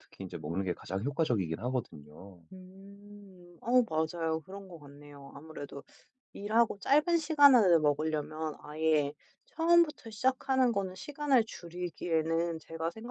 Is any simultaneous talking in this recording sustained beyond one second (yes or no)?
no